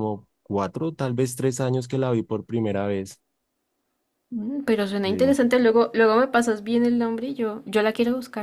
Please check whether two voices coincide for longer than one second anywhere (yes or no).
no